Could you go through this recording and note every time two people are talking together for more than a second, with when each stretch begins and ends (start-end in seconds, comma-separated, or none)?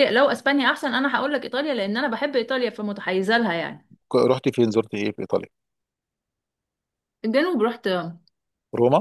none